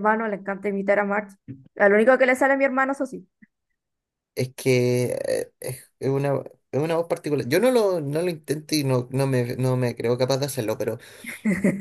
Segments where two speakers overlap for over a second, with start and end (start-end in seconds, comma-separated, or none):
none